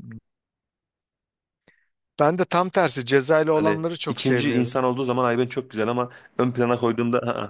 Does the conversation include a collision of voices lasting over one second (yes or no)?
yes